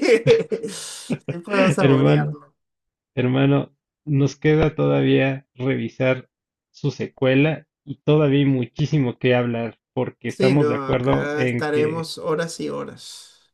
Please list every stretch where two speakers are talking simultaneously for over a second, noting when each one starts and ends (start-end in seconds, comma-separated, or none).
10.3-12.1